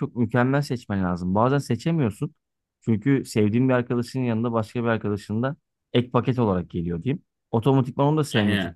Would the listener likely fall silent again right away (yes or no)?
yes